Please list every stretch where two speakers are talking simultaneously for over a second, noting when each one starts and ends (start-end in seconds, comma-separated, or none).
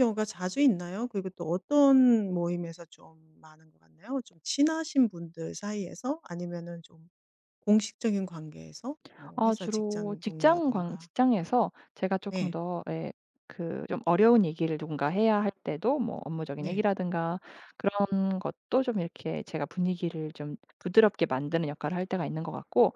9.3-11.1